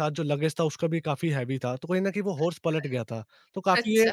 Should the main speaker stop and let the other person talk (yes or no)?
no